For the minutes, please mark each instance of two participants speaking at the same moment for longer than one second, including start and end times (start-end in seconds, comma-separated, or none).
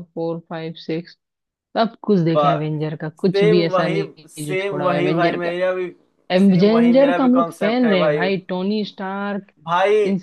3.2-5.5, 6.4-8.2